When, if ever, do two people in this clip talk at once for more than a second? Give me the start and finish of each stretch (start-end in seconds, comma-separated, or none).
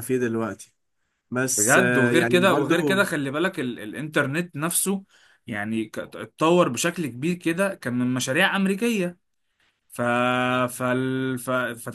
1.6-3.0